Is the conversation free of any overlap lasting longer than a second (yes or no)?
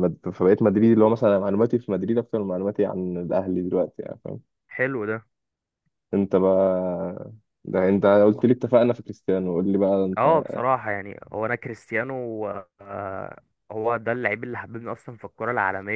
yes